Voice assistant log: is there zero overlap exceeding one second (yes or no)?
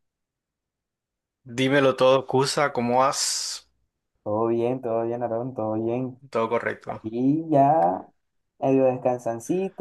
yes